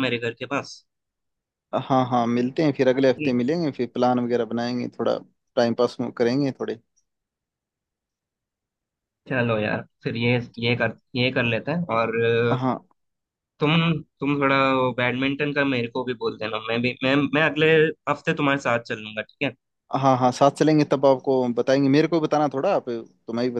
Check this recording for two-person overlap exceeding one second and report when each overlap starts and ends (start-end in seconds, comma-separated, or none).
none